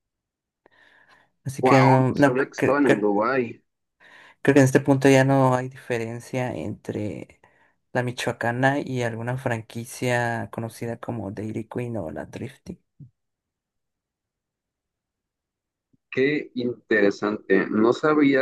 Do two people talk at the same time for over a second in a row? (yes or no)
yes